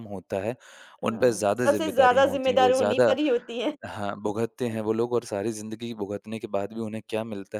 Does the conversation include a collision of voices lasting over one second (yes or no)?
yes